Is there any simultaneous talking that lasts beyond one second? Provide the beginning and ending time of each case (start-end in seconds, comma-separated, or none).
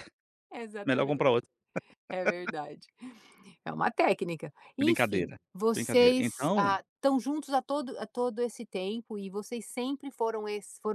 4.8-6.7